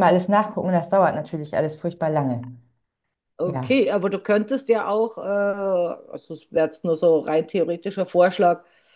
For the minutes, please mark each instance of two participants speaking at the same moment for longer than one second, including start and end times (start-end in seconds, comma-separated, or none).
none